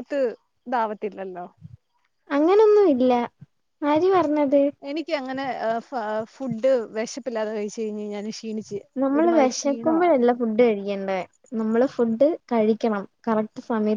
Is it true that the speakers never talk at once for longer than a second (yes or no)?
no